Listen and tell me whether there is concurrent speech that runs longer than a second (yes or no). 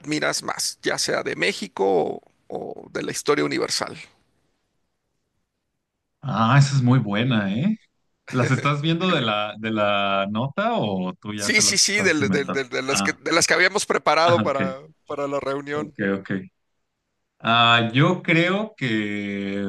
yes